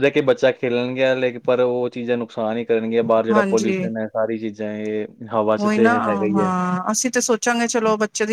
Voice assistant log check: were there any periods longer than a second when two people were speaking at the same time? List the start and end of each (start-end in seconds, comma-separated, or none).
none